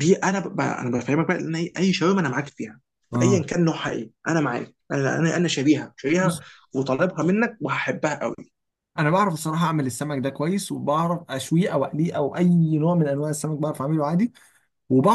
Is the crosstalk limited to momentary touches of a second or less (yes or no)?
yes